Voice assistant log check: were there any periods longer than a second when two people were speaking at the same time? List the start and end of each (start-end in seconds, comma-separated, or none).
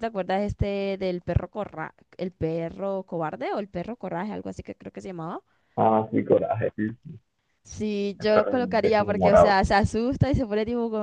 8.2-9.6